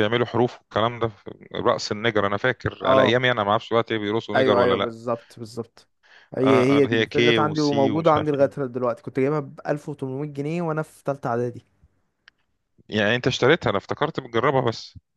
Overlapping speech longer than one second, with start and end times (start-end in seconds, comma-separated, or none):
6.4-8.7